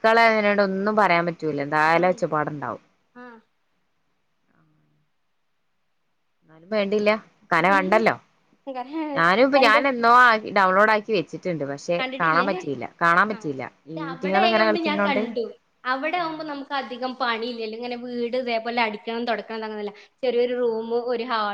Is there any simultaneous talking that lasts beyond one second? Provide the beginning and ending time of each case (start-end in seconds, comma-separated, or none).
13.3-15.2